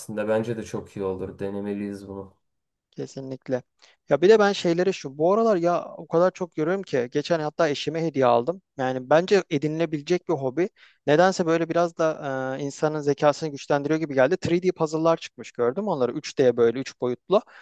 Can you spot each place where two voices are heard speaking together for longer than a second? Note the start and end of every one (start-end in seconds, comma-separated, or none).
none